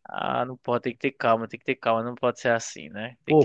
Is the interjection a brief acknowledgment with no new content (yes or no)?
no